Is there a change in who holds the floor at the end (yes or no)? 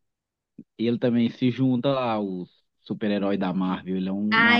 yes